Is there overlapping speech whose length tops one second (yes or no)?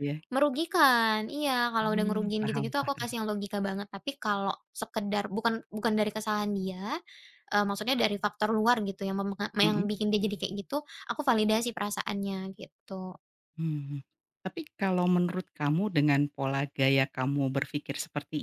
yes